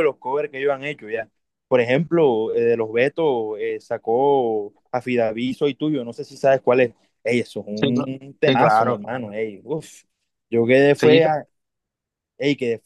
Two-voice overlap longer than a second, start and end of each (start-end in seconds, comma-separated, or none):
7.7-9.3